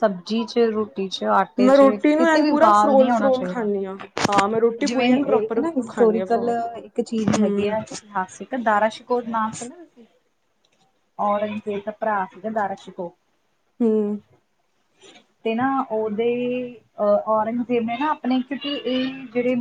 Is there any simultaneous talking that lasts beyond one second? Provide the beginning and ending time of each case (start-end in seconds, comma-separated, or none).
1.6-3.7, 4.9-6.5